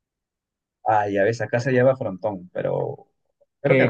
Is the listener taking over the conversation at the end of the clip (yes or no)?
yes